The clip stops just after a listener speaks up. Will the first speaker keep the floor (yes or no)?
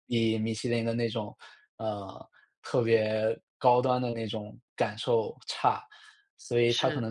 yes